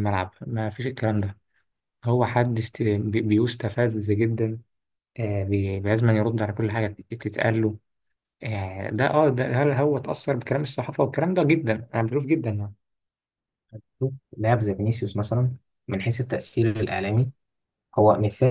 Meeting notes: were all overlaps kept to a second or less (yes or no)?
yes